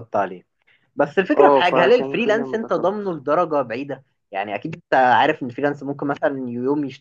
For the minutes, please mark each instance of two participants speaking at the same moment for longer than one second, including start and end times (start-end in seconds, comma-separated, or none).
1.3-3.2